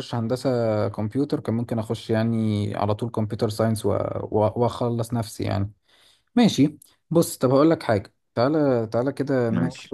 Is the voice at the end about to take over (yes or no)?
no